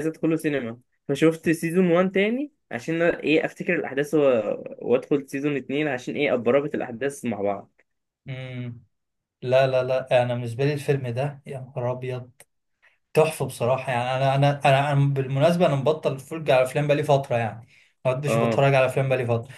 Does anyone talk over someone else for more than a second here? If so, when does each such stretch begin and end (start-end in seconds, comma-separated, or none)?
none